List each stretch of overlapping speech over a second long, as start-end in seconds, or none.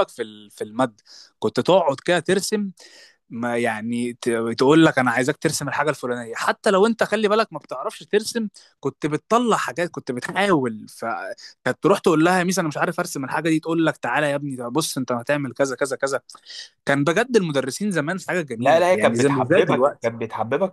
18.6-20.1